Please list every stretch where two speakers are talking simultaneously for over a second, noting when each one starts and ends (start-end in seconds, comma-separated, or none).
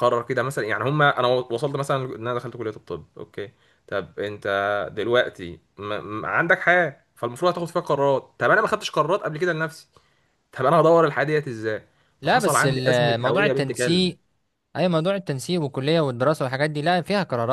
12.2-14.2